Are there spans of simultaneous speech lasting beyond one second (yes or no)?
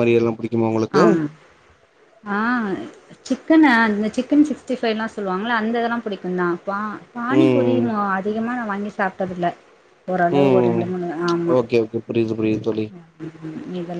no